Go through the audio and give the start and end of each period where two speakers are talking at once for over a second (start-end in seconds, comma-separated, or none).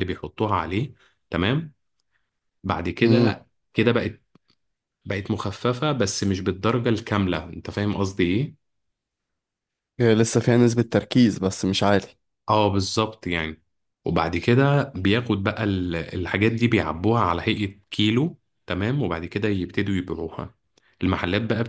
none